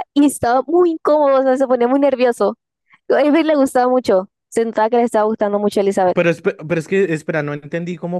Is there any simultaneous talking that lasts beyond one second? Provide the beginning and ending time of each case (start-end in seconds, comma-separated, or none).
none